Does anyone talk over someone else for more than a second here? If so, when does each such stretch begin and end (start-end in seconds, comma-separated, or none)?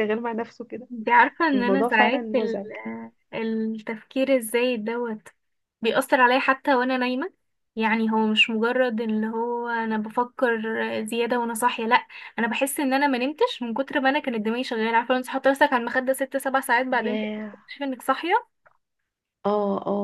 1.5-2.7